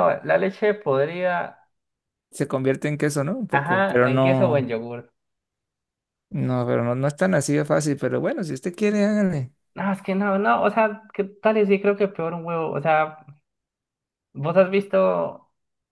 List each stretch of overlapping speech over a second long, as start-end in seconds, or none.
3.5-4.7